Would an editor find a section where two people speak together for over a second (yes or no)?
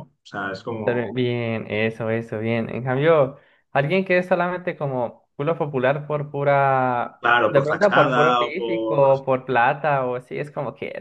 yes